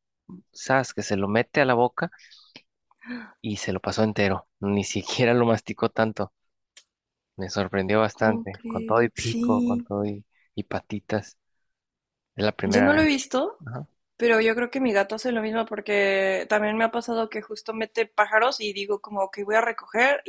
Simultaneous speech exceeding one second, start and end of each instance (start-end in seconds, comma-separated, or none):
8.1-9.8